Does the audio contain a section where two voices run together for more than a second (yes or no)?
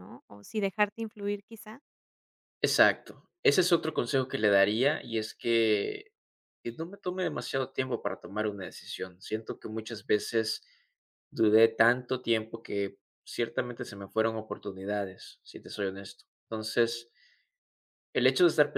no